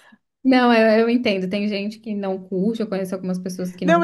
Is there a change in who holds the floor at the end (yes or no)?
yes